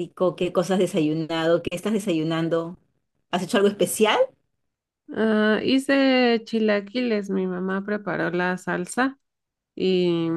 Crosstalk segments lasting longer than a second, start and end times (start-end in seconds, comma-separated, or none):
none